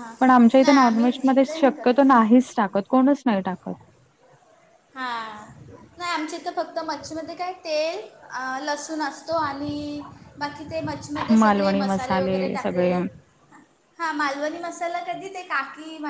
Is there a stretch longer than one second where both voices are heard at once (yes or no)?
yes